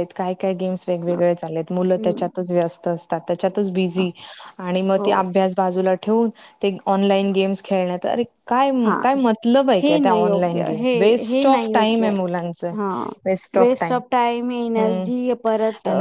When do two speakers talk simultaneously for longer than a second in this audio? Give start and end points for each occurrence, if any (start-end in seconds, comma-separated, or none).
9.8-12.1